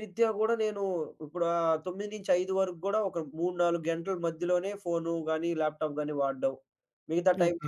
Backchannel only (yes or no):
yes